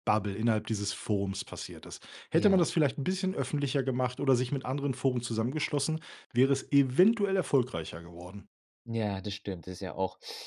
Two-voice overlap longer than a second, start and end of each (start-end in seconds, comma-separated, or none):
none